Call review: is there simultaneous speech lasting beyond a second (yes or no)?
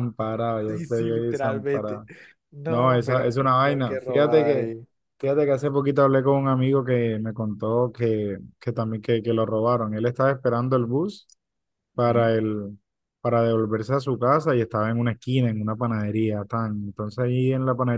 yes